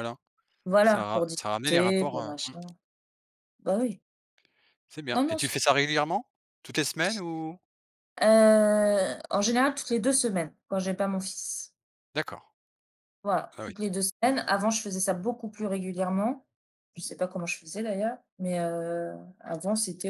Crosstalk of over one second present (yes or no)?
yes